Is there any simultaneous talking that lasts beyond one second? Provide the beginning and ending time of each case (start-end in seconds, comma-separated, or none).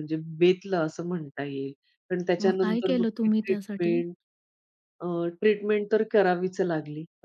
2.4-4.0